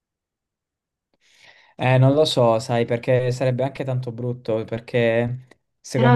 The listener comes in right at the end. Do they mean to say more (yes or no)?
yes